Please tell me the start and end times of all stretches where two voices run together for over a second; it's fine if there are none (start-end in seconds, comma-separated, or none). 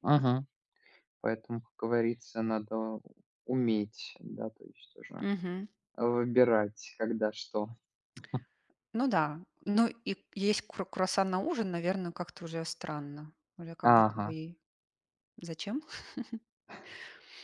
none